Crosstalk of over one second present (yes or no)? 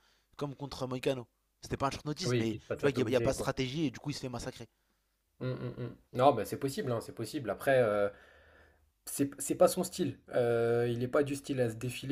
yes